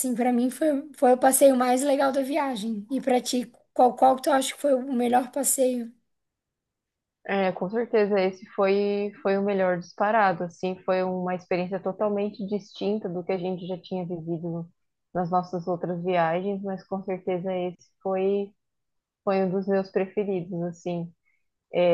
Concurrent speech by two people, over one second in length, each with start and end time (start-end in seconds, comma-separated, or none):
none